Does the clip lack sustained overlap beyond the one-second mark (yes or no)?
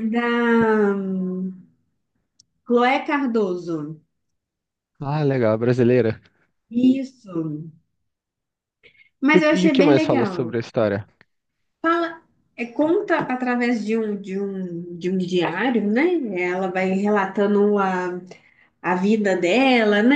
no